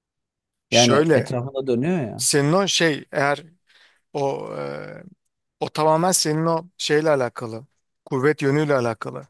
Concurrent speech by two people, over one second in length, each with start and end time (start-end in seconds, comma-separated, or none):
none